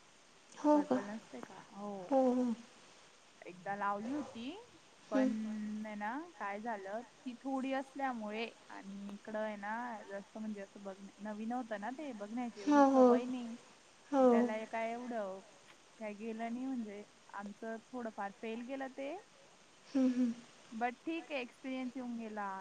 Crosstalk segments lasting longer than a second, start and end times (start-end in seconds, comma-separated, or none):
none